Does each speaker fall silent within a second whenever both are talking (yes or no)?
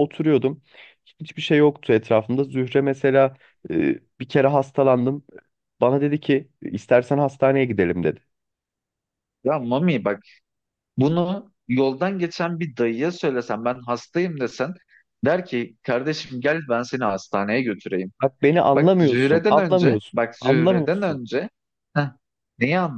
no